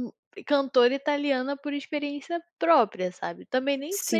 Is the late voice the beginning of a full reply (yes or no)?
yes